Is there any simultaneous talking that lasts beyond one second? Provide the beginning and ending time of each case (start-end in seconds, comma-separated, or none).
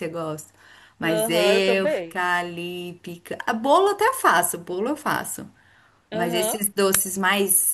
1.0-2.2